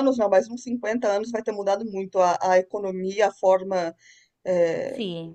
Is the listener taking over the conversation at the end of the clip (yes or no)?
no